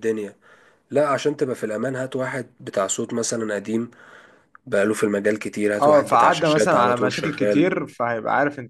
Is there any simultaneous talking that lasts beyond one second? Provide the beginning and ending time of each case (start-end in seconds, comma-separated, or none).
5.8-7.7